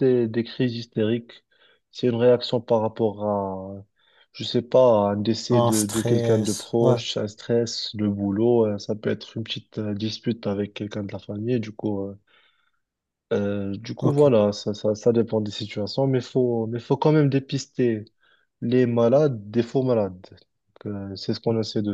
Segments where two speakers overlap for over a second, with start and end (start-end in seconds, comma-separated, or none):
5.5-7.0